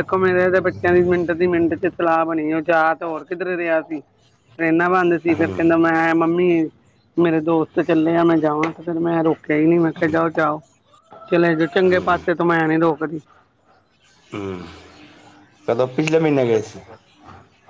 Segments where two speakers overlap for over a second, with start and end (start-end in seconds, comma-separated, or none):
none